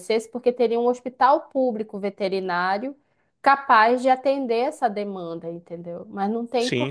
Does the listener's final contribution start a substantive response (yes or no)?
yes